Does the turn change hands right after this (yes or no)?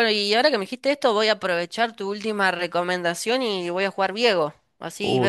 yes